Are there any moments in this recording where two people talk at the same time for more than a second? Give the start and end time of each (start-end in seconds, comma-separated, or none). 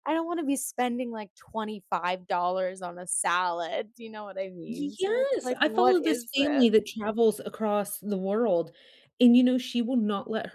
4.7-6.9